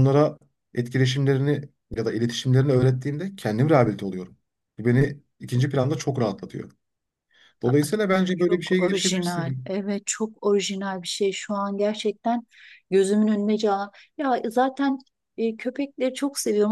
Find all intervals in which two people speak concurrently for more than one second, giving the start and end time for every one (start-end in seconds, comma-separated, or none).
8.4-9.7